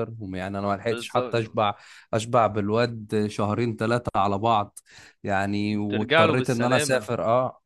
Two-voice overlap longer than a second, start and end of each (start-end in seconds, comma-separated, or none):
5.9-7.1